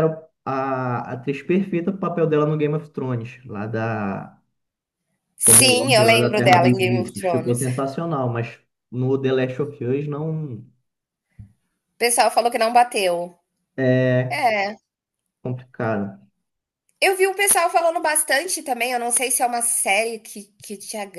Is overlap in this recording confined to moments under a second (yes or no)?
no